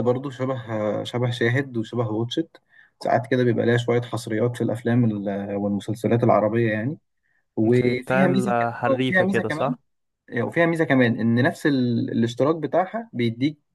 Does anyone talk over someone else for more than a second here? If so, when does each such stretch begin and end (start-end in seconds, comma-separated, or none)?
7.8-9.8